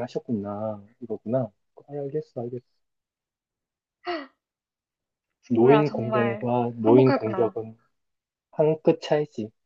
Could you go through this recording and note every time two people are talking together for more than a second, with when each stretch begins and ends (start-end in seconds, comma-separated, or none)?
5.5-7.6